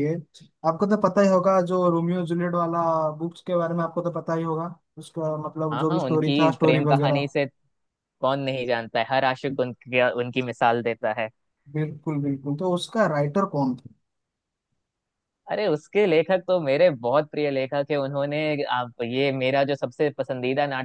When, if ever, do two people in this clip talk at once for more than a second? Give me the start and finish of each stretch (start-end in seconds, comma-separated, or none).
5.7-7.3